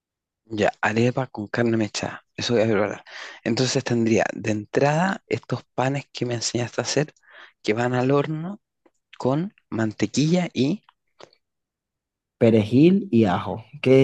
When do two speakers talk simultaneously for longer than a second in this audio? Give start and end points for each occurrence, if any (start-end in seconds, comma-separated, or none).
none